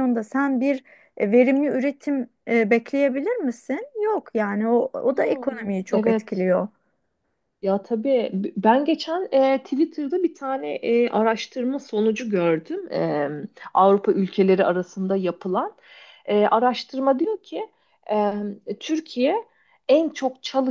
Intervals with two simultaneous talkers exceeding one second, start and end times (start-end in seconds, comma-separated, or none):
5.1-6.4